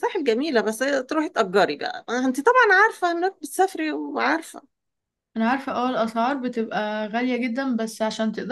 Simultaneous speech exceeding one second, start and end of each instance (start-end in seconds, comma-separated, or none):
none